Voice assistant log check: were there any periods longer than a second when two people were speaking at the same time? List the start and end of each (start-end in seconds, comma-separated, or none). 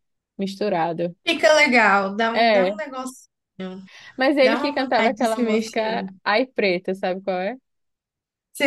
4.4-6.1